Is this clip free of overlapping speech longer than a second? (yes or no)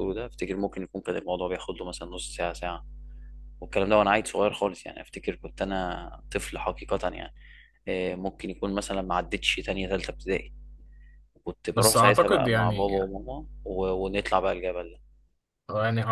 no